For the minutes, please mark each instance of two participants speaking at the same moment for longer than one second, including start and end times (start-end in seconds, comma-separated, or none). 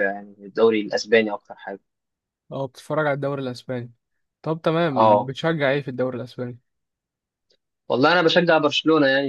none